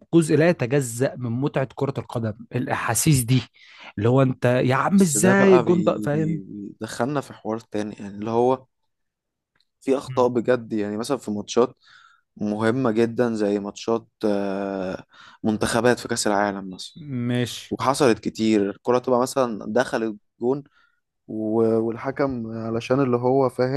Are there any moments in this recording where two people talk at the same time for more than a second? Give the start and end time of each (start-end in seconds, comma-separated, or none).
4.9-6.4